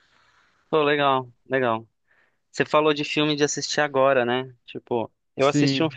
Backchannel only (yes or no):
yes